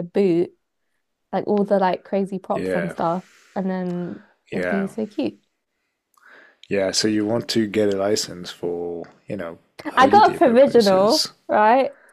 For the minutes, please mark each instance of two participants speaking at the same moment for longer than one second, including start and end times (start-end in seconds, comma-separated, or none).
10.0-11.3